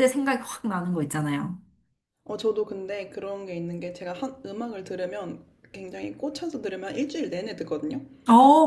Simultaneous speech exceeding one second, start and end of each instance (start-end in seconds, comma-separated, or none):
none